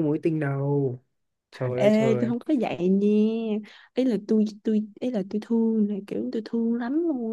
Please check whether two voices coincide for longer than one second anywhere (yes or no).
no